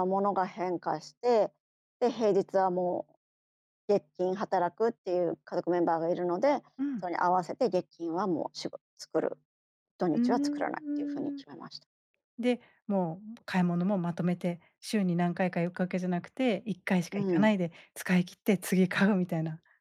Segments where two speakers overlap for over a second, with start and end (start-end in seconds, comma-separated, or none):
10.1-11.4